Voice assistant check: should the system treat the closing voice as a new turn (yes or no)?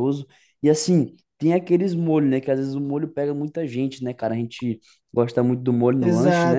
yes